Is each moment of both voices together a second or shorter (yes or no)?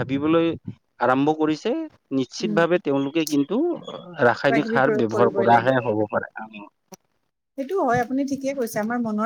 no